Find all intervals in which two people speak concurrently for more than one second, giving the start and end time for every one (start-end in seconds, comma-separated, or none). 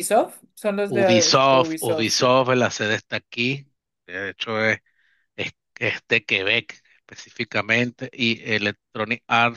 0.9-2.4